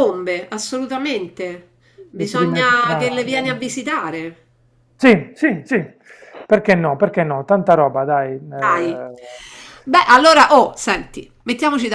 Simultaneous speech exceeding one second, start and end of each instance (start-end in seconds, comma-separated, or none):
2.2-3.6